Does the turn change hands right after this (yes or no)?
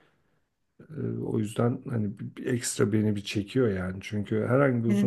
no